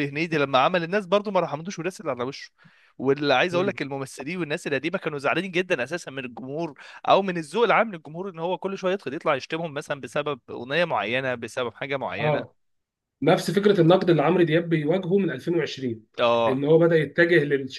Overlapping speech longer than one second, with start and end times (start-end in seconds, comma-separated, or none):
none